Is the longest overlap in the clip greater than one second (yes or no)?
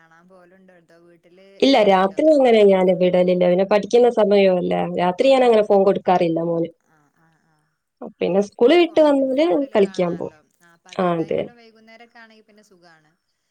yes